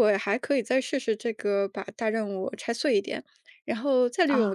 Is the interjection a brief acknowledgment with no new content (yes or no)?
yes